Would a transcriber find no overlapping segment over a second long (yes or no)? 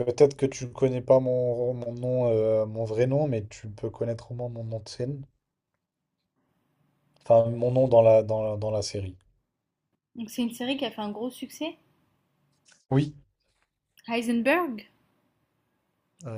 yes